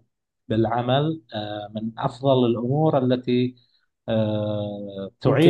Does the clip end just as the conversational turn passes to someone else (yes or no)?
no